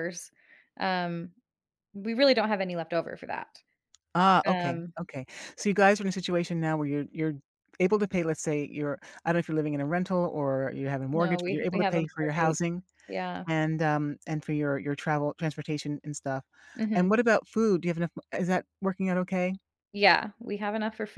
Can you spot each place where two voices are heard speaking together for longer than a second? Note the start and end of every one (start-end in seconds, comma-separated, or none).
11.1-12.6